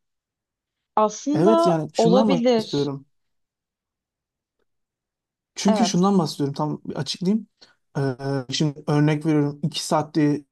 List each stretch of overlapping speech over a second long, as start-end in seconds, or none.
1.3-2.9